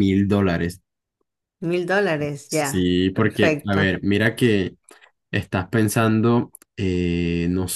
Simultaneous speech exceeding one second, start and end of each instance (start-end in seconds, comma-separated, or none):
2.5-4.0